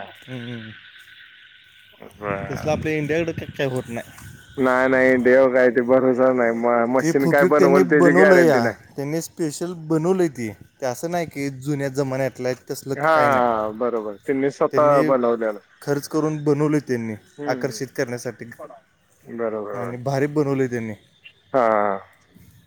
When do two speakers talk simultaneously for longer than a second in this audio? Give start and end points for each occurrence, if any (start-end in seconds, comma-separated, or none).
7.0-8.7